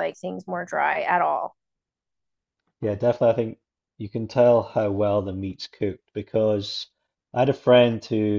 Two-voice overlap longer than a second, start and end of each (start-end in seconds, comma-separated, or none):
none